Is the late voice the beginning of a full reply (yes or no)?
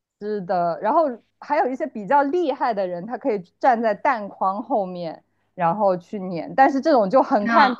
no